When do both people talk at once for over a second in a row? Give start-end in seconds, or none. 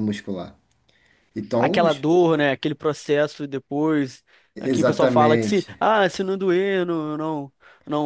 4.6-5.8